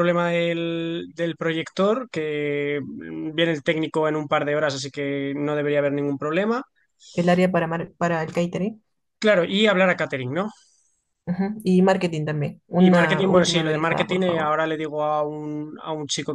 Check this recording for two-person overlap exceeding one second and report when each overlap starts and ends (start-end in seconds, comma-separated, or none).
12.7-14.5